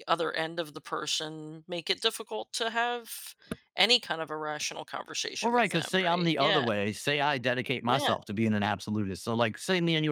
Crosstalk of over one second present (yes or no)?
yes